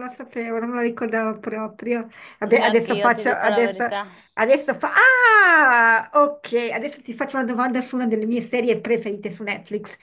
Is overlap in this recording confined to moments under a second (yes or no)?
no